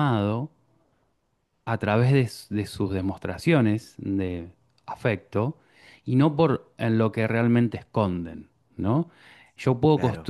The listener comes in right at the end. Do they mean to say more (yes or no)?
no